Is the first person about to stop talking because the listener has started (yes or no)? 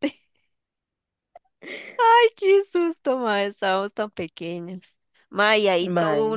no